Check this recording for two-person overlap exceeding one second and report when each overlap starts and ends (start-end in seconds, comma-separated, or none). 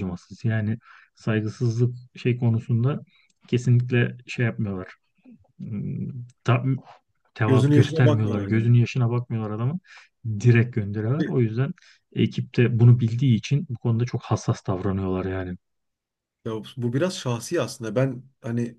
7.4-8.7